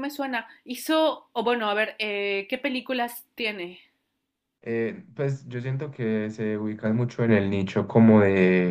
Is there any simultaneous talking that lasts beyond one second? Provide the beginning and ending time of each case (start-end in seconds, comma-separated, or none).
none